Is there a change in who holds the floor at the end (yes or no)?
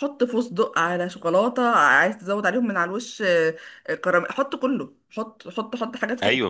no